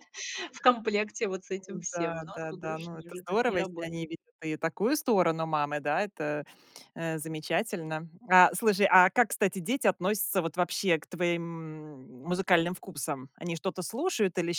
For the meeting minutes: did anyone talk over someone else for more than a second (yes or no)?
yes